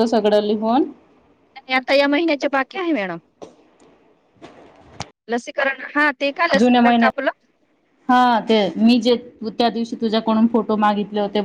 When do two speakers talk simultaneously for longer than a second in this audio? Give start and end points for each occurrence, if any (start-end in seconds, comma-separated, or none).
none